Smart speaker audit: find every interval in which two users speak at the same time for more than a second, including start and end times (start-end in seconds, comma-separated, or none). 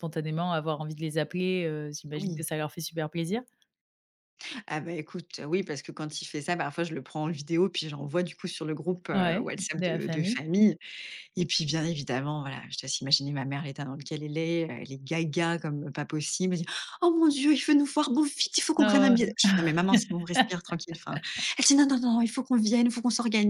9.1-10.4